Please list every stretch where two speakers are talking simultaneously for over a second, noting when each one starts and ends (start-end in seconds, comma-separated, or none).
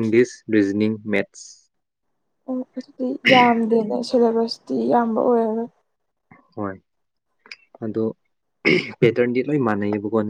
none